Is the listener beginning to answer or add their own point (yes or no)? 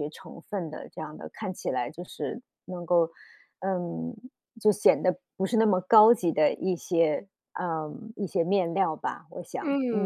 yes